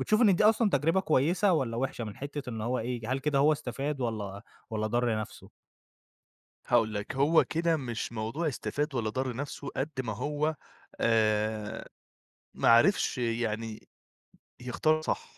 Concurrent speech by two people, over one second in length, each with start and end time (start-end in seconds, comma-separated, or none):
none